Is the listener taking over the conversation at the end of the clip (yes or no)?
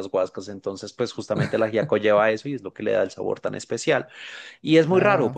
no